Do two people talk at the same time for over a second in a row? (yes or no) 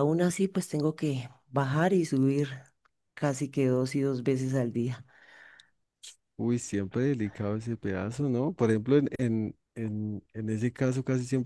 no